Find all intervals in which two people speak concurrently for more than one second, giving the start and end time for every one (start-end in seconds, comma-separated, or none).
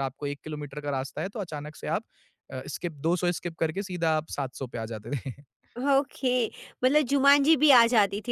none